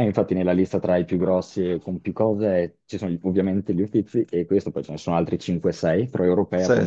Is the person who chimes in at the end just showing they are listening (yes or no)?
yes